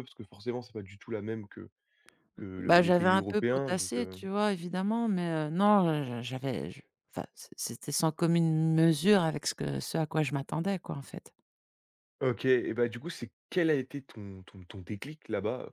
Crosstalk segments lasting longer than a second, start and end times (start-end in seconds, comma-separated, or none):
2.6-4.2